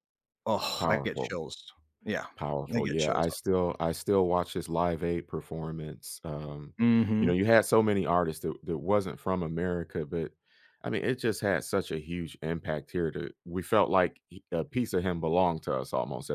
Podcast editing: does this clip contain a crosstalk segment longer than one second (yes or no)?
no